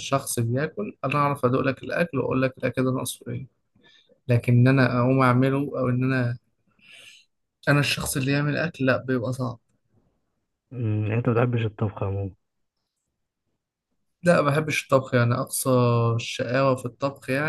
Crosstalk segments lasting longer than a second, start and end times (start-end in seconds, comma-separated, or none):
none